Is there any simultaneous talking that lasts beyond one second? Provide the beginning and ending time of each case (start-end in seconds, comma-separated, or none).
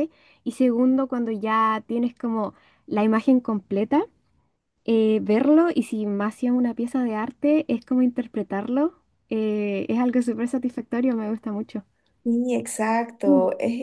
none